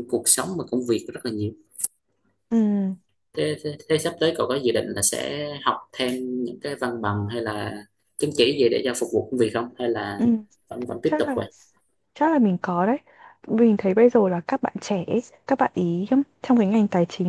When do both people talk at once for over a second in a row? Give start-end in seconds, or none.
none